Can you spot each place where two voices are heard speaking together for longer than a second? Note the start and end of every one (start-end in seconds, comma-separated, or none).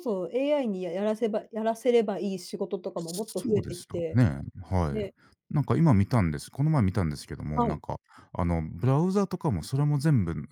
3.0-4.2